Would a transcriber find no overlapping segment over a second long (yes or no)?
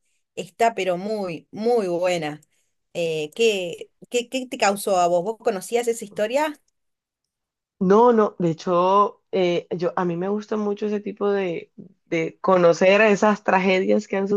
yes